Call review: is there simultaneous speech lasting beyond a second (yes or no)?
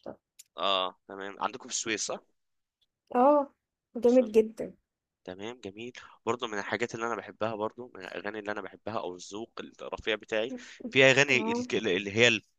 no